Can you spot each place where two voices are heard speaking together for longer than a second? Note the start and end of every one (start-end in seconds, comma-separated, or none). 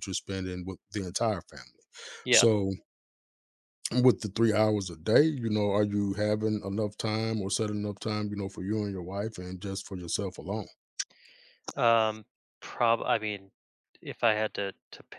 none